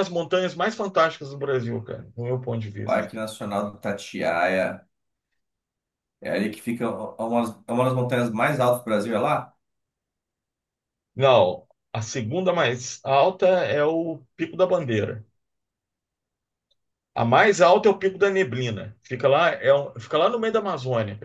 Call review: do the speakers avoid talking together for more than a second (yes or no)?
yes